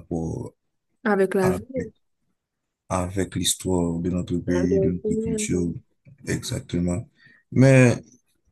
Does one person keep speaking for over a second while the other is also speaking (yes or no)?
yes